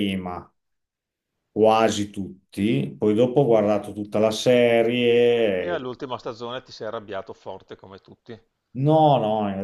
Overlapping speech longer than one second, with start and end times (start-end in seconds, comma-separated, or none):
none